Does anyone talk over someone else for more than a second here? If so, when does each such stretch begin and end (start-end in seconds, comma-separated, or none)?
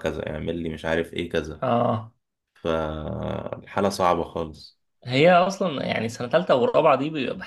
none